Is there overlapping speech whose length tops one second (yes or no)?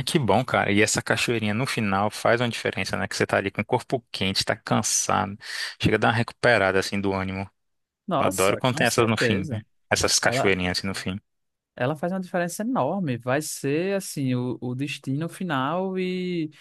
yes